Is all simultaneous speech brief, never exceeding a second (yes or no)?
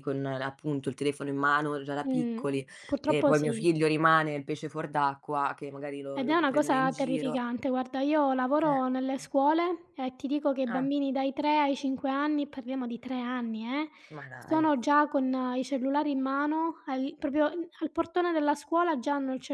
no